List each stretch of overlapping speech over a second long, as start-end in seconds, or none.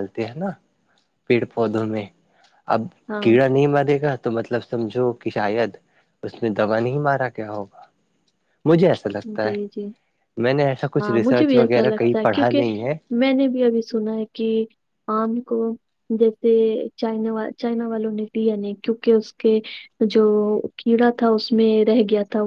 11.0-12.6